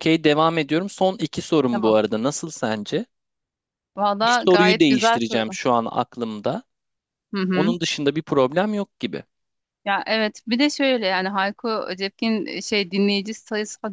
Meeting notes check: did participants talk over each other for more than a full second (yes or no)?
yes